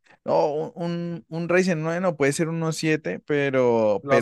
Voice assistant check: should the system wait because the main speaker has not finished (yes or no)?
yes